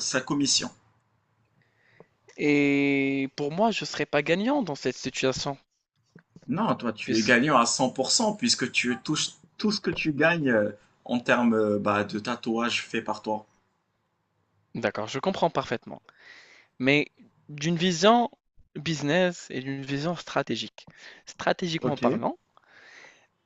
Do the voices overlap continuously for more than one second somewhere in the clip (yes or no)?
no